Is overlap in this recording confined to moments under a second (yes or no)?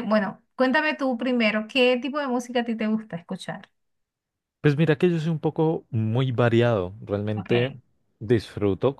yes